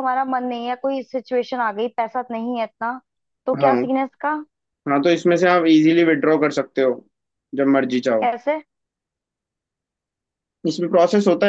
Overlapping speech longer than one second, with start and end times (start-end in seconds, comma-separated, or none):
none